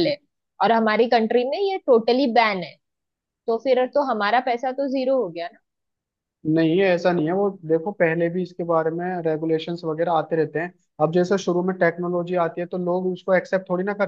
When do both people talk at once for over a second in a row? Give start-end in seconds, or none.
none